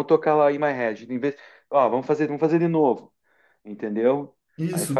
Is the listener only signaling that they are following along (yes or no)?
no